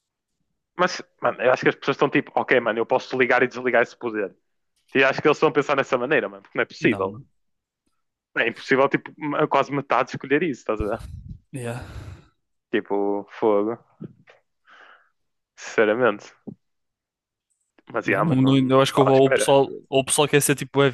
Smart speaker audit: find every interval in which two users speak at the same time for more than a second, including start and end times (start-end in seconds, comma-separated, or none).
18.1-19.5